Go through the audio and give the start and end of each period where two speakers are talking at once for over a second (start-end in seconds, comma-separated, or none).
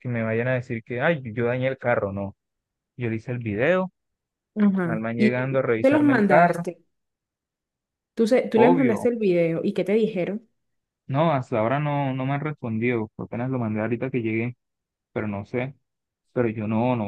4.8-6.6